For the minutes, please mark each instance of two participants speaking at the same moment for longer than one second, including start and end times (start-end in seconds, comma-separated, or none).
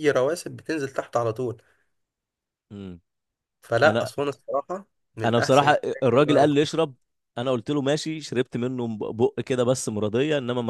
5.2-6.7